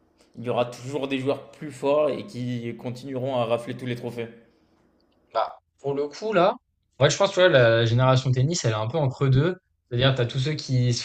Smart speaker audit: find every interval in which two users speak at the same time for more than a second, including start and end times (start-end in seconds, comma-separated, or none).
none